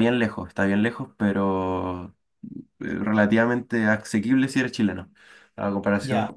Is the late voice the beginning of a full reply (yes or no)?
no